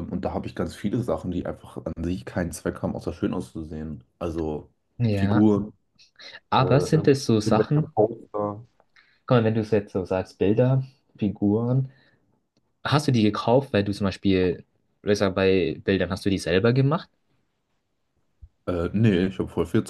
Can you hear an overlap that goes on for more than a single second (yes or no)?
yes